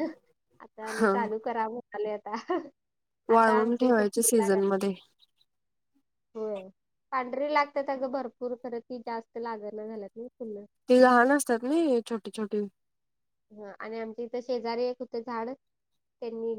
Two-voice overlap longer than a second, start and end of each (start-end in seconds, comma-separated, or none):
3.4-4.6